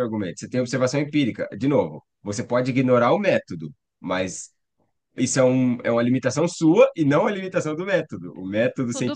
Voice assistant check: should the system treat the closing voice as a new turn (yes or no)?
yes